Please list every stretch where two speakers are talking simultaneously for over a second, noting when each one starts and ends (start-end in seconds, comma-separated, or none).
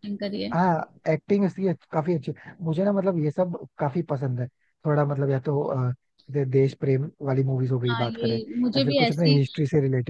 7.9-9.4